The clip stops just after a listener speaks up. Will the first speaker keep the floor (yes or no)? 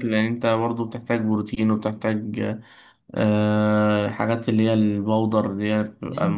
no